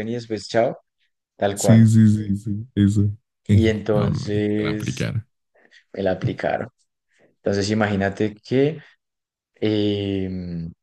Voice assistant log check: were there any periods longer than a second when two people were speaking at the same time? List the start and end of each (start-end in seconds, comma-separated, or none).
3.9-5.1